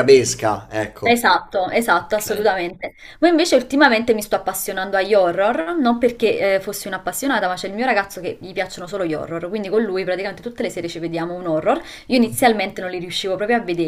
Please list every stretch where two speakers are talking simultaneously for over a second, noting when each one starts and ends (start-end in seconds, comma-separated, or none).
none